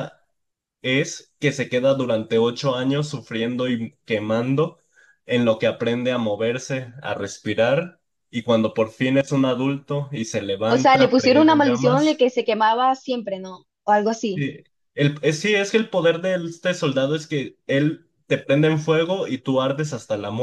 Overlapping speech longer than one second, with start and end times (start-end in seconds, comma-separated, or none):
10.7-12.3